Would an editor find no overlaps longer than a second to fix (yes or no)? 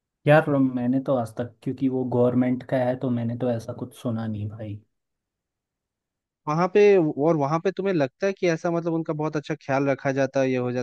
yes